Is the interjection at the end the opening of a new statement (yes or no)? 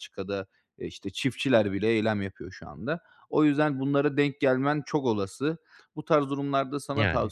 no